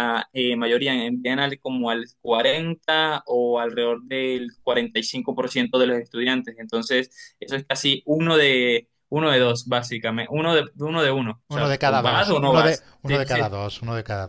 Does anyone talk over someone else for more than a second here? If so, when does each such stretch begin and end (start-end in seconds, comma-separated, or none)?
11.5-13.5